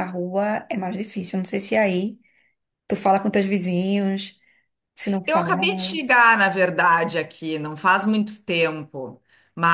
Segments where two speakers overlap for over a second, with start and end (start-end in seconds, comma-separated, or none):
none